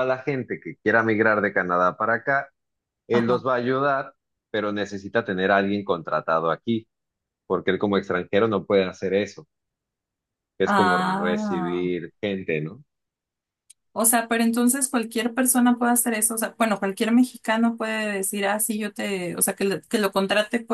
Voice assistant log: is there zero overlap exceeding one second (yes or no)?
no